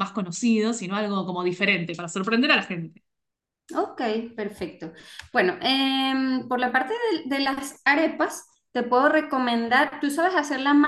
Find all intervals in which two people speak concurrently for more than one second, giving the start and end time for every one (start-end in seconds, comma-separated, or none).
none